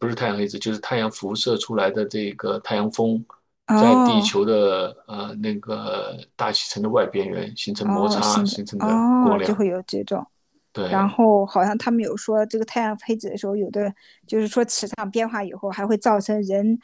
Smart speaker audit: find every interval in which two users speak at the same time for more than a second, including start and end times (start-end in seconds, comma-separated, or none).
7.8-9.6